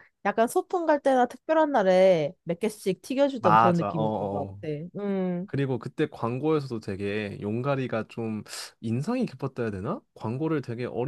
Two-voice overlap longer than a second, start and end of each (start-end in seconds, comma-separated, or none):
3.4-4.6